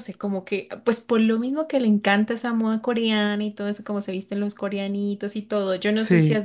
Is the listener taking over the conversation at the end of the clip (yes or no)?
no